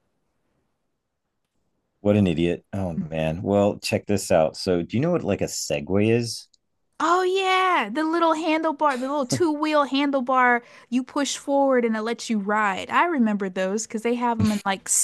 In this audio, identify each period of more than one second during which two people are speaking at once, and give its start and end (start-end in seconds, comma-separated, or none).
none